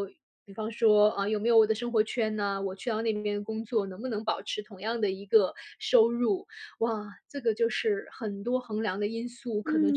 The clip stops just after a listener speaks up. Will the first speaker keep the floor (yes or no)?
no